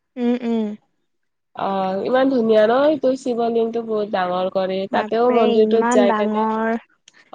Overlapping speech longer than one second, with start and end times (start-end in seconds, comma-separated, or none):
5.0-6.4